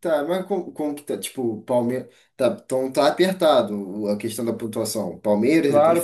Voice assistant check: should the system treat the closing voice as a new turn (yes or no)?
yes